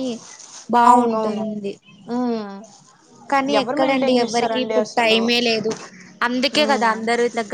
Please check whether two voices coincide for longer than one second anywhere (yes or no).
yes